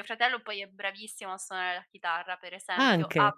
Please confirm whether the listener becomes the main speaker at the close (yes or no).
no